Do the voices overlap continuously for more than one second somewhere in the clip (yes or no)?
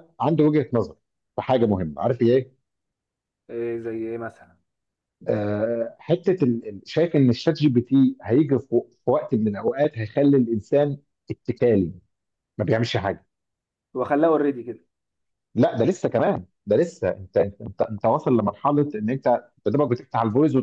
no